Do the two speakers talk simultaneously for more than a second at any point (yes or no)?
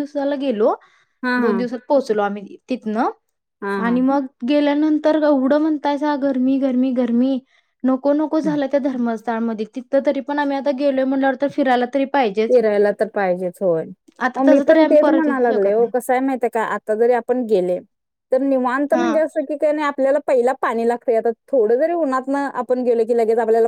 yes